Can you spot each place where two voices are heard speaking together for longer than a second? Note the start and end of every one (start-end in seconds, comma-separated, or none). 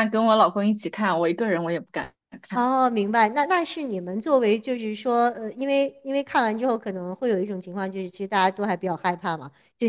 none